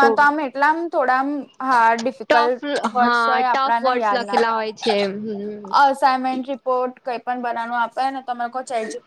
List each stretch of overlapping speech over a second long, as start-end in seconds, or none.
2.1-4.4